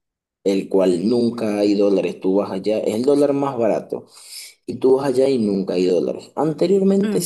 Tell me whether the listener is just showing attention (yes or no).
yes